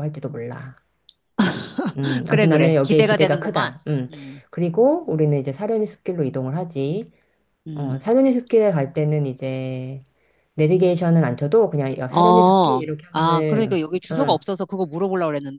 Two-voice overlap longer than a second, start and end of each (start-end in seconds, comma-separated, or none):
2.3-3.7, 12.1-14.4